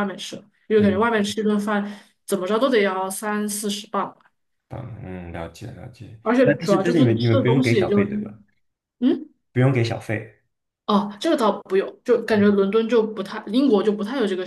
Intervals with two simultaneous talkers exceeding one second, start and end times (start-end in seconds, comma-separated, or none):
6.2-8.0